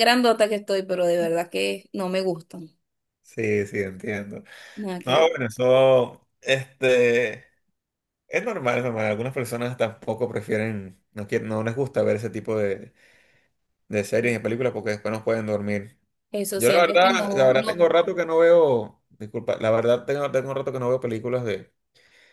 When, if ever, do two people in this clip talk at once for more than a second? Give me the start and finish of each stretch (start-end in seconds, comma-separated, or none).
16.5-17.9